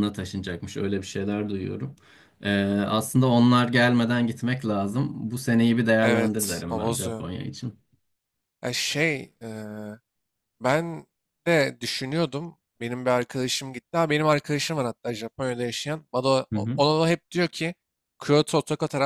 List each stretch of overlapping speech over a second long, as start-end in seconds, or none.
6.0-7.2